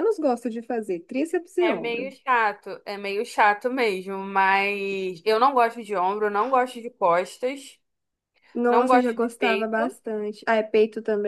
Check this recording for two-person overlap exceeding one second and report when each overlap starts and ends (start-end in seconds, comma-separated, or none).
8.7-10.0